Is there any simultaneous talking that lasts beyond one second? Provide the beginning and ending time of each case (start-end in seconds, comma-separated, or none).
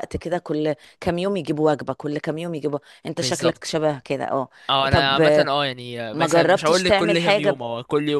6.1-7.6